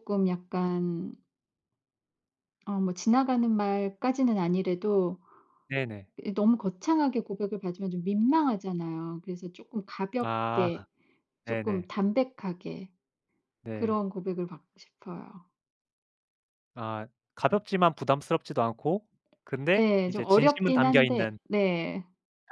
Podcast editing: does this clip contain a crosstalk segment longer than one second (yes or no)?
yes